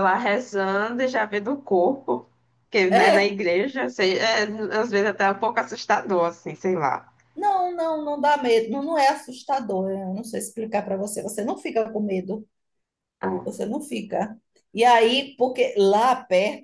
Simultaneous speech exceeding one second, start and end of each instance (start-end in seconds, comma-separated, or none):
none